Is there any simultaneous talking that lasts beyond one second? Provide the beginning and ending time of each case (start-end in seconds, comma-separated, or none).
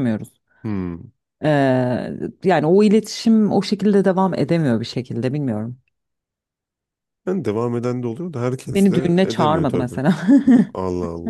8.7-10.0